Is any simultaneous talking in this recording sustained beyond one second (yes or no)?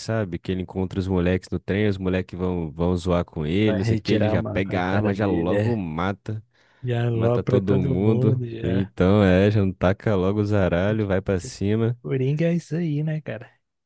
yes